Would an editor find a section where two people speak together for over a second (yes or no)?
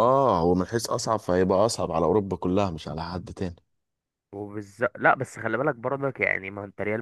no